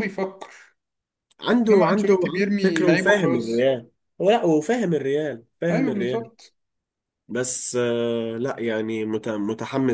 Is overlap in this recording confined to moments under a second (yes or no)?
no